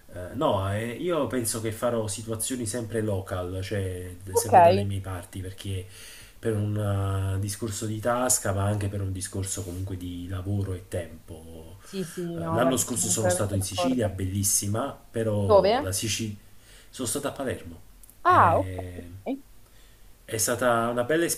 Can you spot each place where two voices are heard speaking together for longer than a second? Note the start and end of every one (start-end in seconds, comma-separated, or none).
12.4-14.1